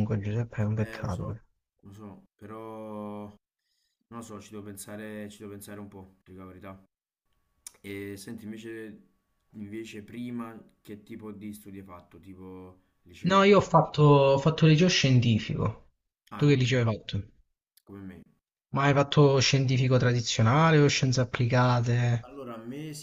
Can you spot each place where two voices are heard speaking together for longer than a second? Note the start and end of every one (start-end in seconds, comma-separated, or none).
none